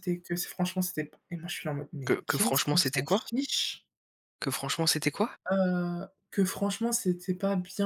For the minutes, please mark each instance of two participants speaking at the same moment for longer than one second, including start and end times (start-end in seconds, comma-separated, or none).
2.0-3.2